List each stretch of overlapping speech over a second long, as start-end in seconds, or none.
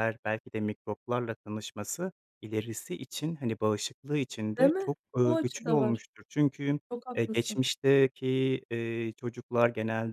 4.6-6.1